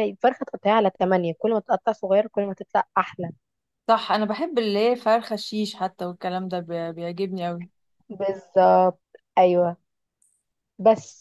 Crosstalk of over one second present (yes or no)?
no